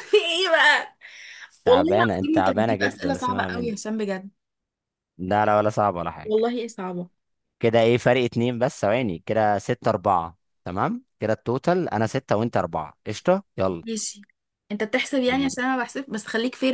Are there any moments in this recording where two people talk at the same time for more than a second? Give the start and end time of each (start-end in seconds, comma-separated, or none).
1.6-3.7